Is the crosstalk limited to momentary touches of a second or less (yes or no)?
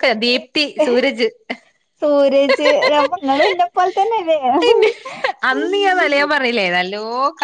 yes